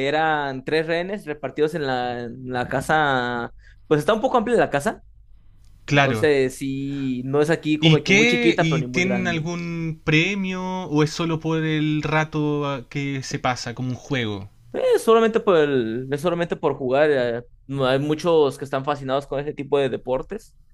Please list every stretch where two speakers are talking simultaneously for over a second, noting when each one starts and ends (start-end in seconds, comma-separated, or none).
7.8-9.5